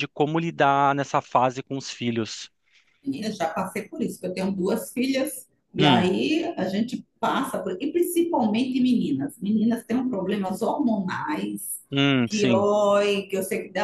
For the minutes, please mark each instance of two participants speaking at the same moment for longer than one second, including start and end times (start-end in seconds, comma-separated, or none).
none